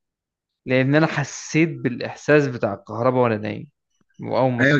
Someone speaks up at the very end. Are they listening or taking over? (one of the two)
taking over